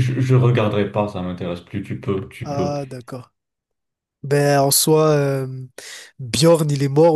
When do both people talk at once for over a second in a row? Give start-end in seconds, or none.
none